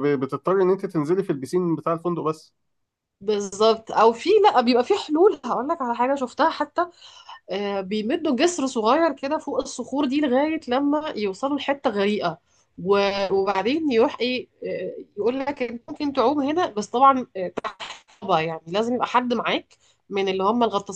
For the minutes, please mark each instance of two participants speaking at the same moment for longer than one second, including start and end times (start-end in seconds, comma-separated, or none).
none